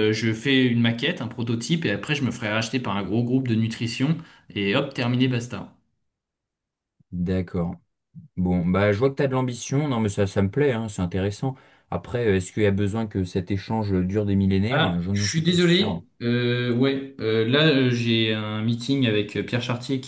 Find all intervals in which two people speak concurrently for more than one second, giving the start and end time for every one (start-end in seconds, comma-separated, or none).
14.7-16.0